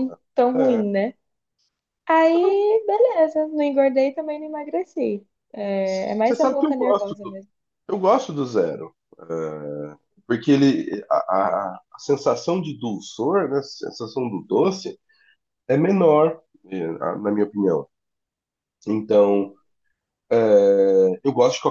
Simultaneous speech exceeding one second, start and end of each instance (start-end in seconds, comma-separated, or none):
5.8-7.4